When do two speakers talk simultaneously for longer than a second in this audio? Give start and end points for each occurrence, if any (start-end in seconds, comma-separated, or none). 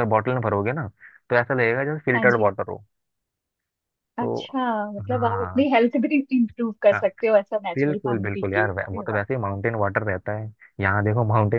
7.8-9.2